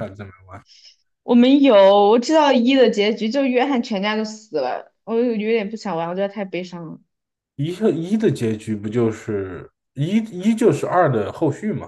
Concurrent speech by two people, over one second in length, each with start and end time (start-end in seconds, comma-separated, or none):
none